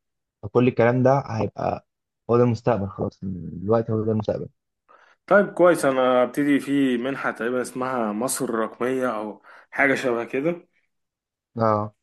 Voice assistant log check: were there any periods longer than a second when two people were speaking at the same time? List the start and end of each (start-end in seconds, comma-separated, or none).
none